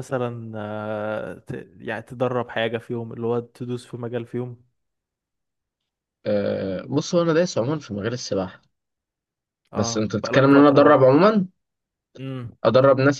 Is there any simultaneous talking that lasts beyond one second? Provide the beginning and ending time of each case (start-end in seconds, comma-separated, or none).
9.8-11.0